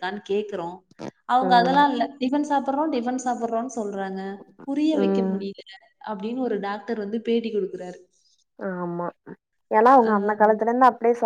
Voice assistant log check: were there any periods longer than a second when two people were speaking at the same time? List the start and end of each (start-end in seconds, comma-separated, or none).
none